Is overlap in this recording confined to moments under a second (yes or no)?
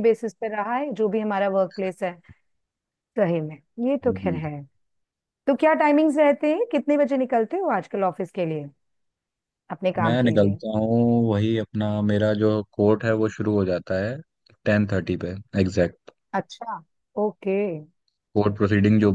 yes